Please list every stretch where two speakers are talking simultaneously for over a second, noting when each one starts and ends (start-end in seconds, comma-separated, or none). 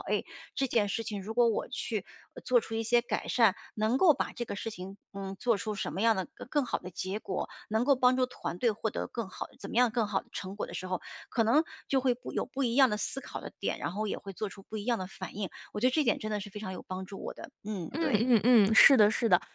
none